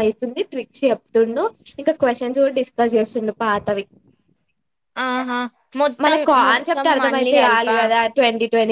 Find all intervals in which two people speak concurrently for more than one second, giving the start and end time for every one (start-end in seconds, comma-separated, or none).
6.0-7.8